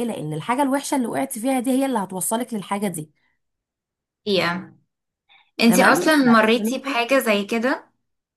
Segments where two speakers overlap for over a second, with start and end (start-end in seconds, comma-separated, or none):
none